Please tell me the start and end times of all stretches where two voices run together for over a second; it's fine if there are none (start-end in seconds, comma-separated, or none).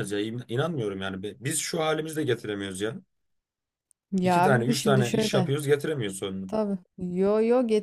4.2-5.5